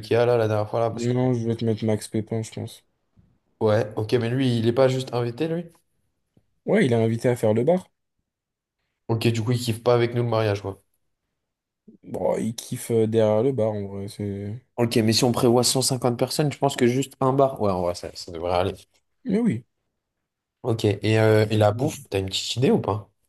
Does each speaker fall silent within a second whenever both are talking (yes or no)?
yes